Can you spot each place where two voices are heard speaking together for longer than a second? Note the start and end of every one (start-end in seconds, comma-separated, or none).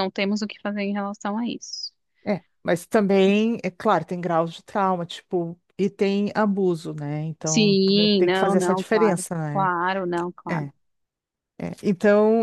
7.4-9.7